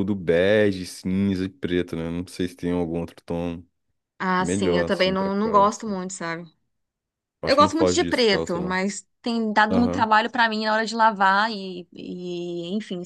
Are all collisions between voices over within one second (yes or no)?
no